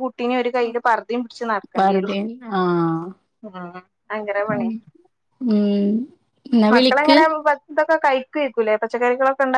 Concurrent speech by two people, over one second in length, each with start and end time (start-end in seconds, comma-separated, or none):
none